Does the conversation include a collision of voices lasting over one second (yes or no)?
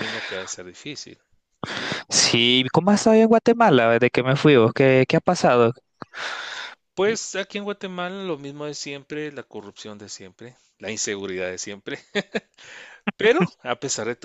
no